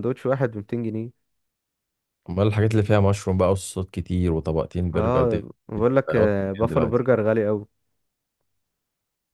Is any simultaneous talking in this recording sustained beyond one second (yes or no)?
yes